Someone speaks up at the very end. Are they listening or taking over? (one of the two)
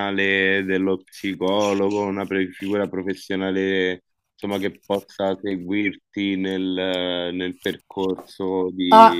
taking over